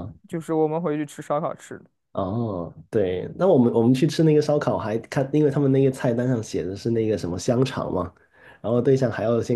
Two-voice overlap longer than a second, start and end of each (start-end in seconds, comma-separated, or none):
none